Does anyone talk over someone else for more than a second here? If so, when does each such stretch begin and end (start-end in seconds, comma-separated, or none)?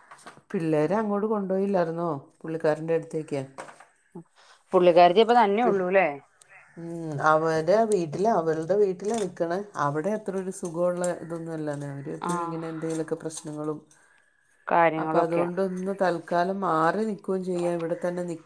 none